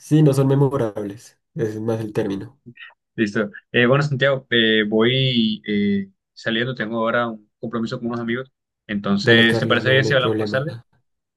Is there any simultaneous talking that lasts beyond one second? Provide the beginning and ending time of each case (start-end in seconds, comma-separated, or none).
9.2-10.6